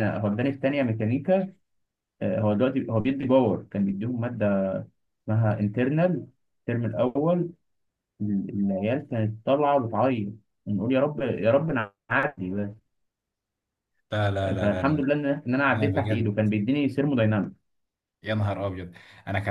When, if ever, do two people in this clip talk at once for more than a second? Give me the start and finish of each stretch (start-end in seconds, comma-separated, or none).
none